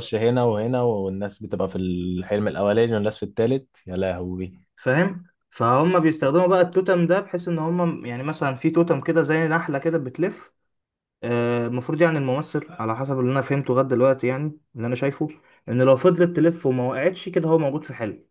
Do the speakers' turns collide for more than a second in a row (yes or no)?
no